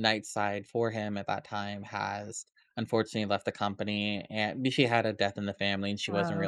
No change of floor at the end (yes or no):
yes